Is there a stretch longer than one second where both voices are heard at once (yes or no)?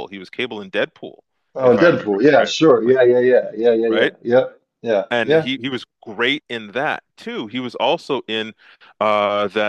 yes